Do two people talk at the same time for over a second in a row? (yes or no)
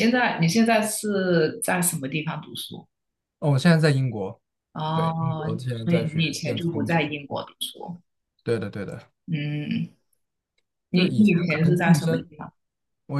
yes